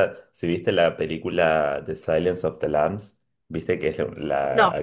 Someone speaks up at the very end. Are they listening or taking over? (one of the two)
listening